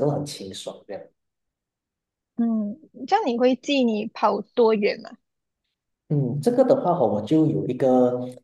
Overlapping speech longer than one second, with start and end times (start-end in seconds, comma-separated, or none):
none